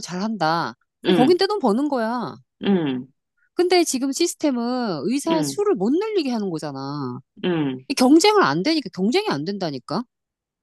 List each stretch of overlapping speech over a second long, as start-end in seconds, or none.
none